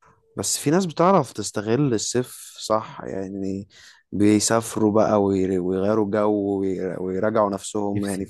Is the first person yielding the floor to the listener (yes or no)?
no